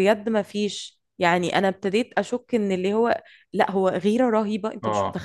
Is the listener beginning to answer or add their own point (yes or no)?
yes